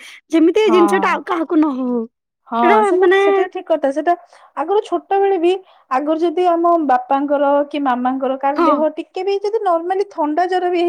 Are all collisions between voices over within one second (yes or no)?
yes